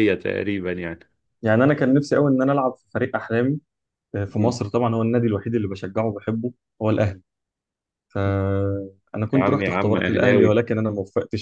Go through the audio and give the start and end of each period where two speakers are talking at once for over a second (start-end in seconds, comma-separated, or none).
9.3-10.6